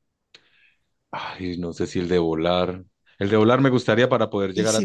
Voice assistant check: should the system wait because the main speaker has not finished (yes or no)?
no